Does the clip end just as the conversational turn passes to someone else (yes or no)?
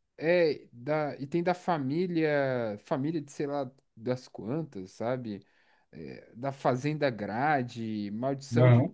no